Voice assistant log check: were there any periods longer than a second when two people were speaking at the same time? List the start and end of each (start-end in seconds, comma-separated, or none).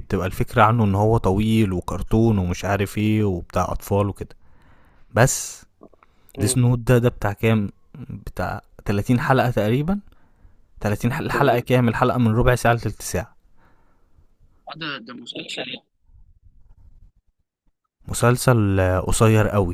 none